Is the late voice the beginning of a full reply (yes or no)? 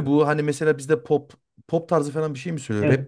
yes